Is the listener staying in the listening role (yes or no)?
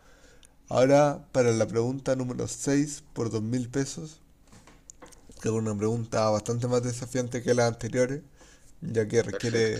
yes